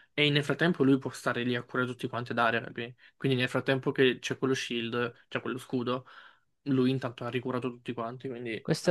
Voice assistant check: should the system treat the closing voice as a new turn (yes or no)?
yes